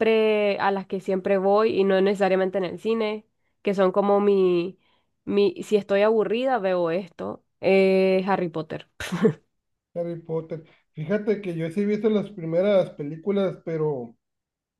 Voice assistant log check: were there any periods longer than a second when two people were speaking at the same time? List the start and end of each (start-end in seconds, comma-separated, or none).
none